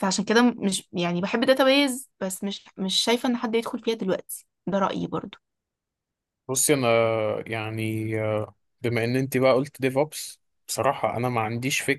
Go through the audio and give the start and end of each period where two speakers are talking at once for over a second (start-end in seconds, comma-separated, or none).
none